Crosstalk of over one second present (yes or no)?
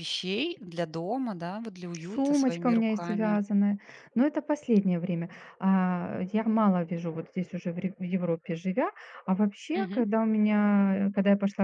yes